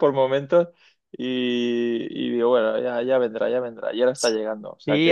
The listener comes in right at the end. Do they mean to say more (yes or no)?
yes